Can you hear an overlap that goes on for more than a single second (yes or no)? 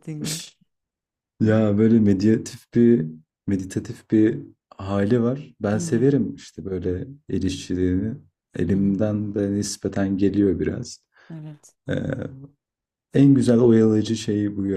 no